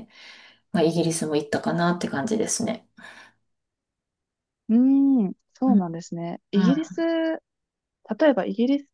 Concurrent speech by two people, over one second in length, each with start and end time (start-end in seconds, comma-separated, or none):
none